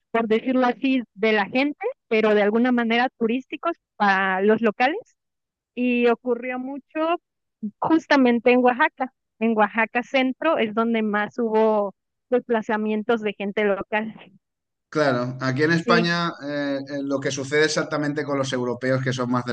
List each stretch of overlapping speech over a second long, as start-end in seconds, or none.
none